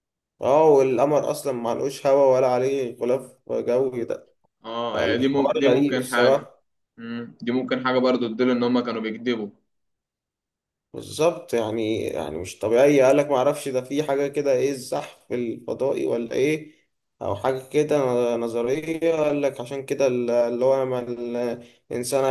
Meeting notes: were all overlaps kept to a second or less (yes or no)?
no